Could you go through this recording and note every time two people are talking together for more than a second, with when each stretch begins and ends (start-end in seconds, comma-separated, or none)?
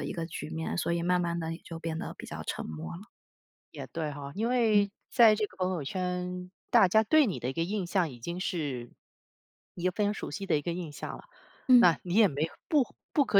none